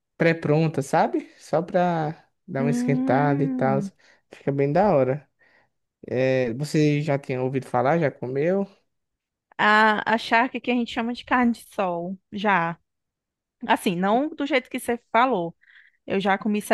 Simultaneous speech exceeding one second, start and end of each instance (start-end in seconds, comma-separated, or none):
2.6-3.8